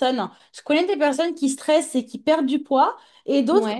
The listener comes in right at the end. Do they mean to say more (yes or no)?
no